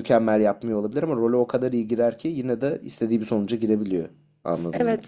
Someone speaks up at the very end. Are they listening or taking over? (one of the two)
taking over